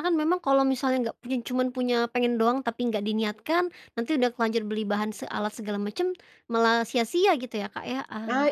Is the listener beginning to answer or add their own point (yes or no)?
yes